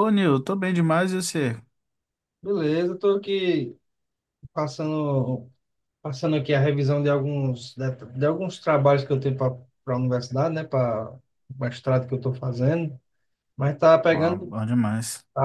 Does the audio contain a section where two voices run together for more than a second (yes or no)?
no